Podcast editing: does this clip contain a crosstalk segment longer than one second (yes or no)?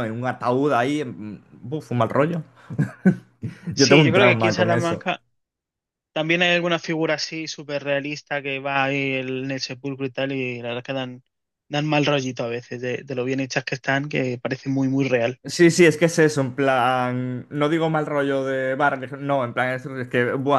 yes